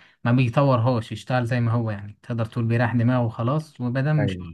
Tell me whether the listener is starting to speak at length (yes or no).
no